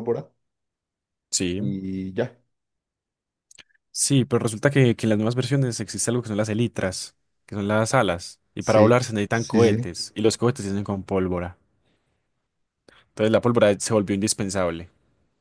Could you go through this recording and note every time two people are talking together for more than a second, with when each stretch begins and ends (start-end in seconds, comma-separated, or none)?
8.6-9.9